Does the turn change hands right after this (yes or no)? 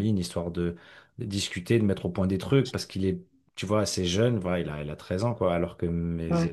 no